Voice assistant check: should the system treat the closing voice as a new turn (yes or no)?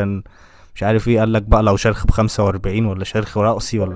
yes